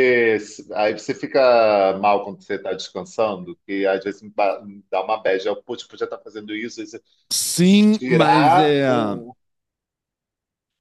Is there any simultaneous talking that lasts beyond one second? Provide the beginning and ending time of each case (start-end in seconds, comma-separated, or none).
7.5-8.8